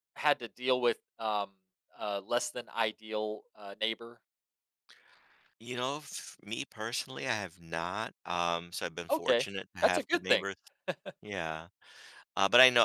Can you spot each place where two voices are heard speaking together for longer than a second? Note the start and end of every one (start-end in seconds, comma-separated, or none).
9.1-10.5